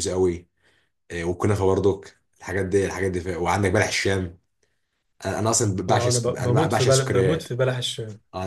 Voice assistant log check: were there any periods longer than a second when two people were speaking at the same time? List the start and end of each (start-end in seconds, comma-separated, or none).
5.9-7.5